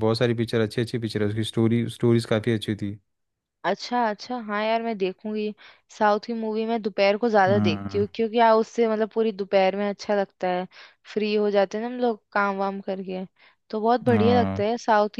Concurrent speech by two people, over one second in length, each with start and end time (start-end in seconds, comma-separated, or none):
none